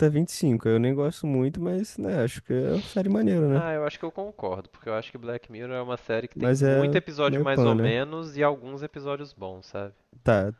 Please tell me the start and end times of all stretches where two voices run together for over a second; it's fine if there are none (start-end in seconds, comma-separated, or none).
6.3-8.0